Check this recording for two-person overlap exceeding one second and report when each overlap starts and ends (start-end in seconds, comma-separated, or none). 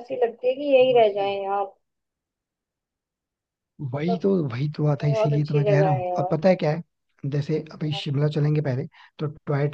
5.0-6.4